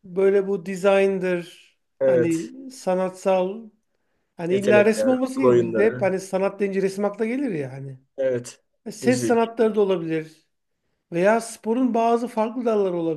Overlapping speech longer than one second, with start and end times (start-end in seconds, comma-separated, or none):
4.5-6.1